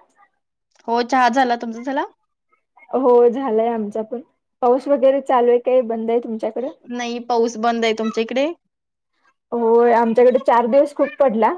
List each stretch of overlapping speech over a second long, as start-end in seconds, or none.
none